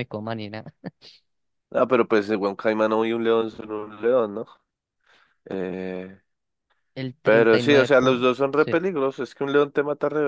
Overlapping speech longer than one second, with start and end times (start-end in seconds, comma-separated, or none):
7.2-8.8